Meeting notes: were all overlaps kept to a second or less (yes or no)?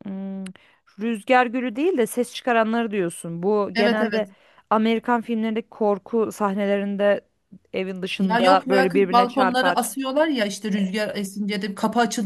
no